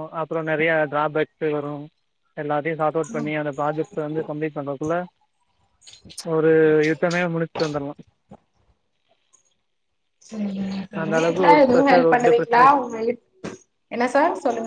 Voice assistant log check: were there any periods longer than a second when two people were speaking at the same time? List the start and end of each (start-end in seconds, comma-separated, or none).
11.2-12.6